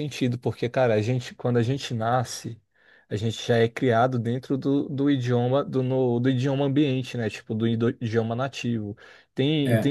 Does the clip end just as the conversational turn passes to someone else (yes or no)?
no